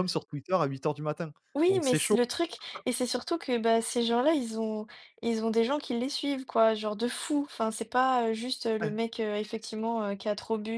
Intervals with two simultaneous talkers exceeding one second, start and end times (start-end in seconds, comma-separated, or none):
none